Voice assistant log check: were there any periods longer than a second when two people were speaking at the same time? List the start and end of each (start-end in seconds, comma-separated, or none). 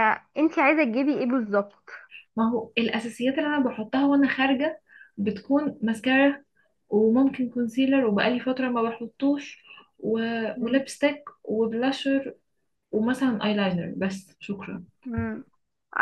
none